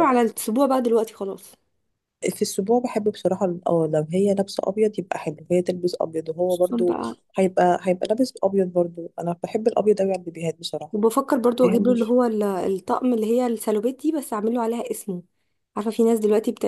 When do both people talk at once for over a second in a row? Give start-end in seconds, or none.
none